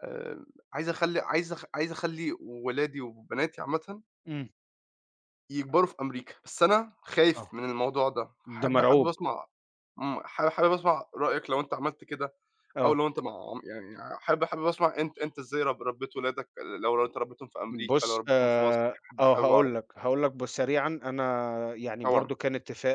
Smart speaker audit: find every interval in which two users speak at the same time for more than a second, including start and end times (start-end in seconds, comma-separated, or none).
17.7-19.7